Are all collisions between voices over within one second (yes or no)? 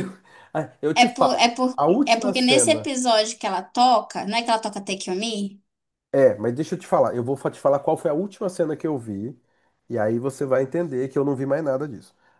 no